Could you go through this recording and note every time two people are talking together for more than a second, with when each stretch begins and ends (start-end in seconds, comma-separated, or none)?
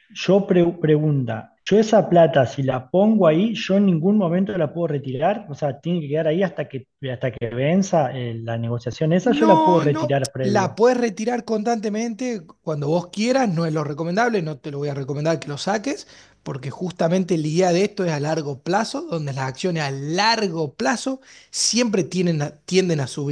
9.2-10.8